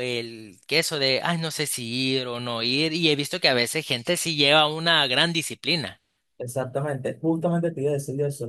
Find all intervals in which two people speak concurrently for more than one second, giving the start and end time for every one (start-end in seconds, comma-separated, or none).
none